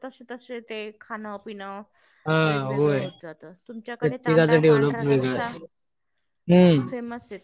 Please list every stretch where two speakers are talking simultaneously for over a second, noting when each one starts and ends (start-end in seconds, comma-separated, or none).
4.0-5.5